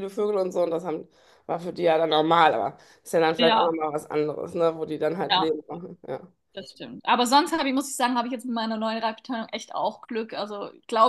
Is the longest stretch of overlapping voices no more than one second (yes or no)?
yes